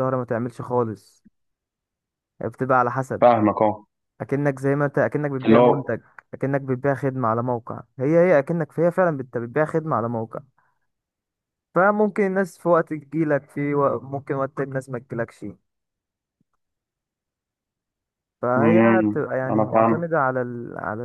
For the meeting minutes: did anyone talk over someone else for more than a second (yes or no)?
yes